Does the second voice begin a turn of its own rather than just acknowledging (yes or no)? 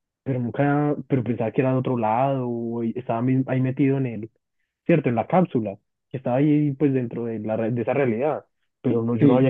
no